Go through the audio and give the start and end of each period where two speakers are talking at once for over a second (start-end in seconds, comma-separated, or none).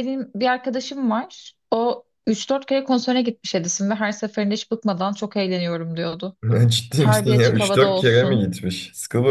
7.0-8.5